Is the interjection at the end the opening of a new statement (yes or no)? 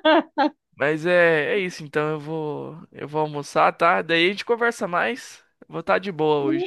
yes